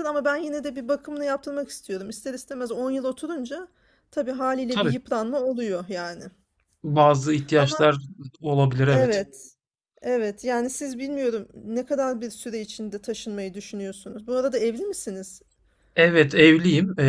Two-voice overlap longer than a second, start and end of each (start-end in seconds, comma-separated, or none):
none